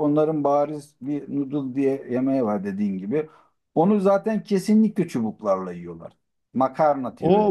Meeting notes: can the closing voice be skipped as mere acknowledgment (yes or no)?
no